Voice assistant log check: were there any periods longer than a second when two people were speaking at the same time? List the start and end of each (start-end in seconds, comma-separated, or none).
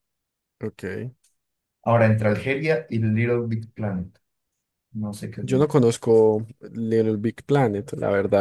none